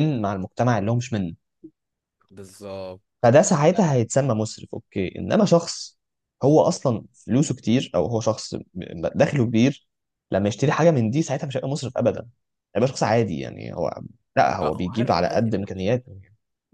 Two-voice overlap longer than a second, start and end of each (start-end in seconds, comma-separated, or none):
14.6-15.9